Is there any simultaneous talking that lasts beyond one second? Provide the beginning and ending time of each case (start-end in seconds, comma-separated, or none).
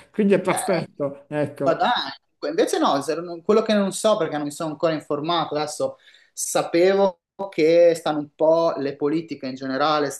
none